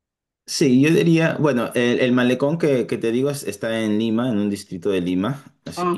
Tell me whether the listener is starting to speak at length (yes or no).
no